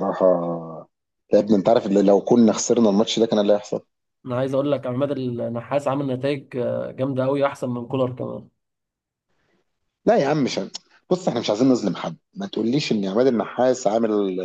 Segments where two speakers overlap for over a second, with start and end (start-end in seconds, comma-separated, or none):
none